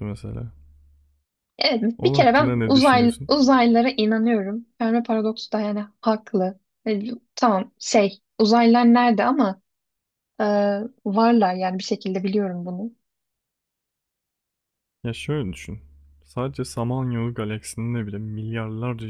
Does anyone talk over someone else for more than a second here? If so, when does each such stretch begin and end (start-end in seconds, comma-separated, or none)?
2.0-3.3